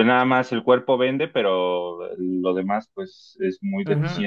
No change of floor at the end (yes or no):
no